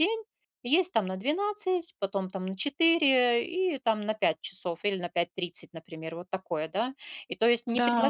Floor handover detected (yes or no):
no